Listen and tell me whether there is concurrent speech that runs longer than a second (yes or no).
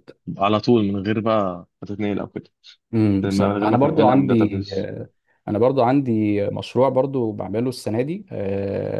yes